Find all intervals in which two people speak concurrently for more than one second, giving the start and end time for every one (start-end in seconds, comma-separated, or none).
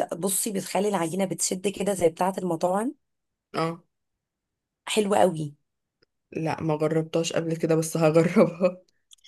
none